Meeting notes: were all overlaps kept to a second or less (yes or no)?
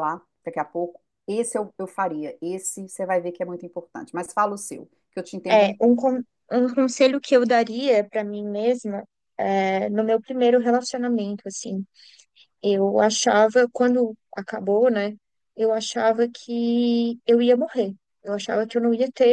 yes